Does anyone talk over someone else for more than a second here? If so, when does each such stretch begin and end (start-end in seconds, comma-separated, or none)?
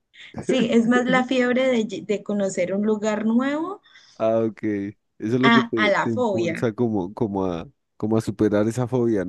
5.4-6.7